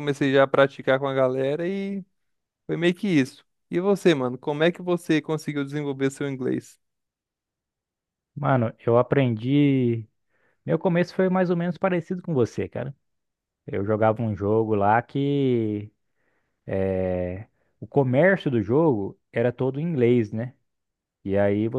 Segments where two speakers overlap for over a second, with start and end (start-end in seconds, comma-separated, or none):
none